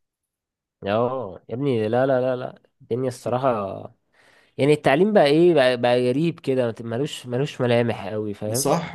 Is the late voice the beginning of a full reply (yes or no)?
yes